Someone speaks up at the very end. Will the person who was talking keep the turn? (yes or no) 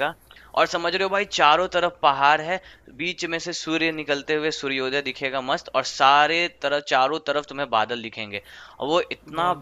yes